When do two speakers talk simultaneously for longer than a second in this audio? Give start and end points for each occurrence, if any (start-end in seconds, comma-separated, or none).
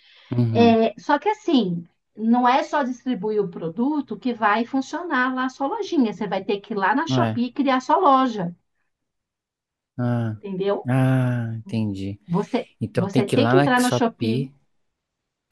12.8-14.5